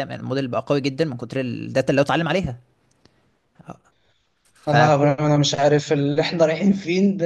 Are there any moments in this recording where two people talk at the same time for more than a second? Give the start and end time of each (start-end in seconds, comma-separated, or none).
none